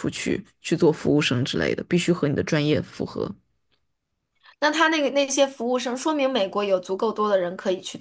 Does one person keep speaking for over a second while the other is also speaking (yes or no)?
no